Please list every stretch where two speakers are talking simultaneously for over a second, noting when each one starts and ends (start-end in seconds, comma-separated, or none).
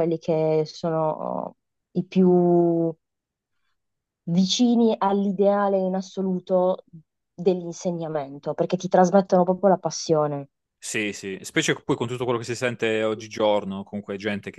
none